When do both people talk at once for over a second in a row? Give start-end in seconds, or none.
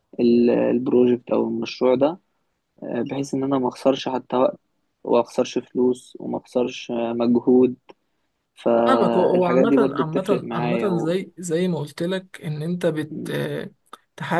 8.9-11.2